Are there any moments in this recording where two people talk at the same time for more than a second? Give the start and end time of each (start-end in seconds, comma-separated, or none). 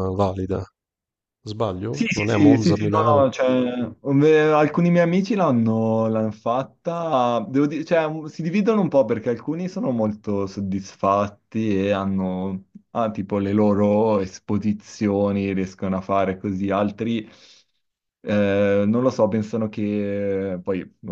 1.9-3.2